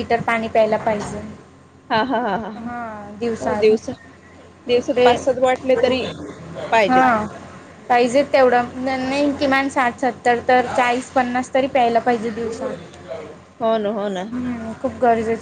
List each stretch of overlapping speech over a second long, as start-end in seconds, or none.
none